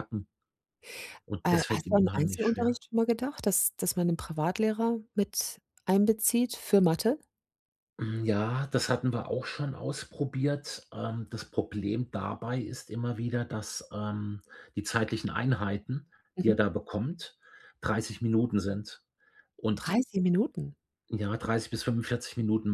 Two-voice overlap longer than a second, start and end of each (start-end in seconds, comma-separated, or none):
1.4-2.8